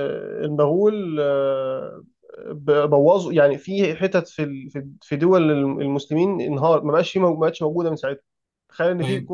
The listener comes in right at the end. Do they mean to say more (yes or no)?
no